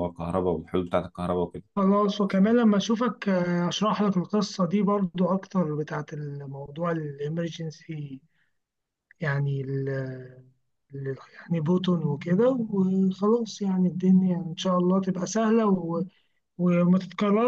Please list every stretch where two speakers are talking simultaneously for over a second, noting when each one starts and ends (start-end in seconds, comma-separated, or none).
none